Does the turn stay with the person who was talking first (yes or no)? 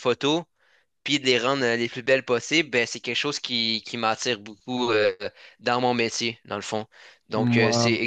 yes